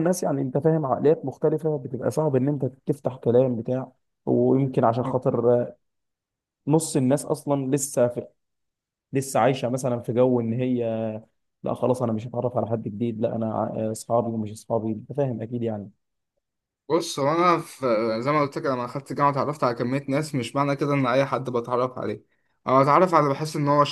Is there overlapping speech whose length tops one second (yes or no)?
no